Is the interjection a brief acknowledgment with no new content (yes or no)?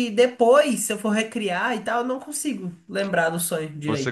no